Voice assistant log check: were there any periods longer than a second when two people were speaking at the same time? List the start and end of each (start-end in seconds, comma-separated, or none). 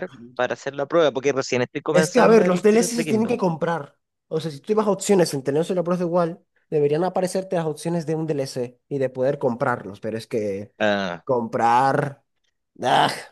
1.9-3.4